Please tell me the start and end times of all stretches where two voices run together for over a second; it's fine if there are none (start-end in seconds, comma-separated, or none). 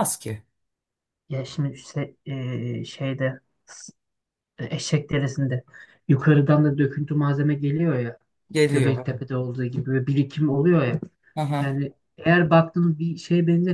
none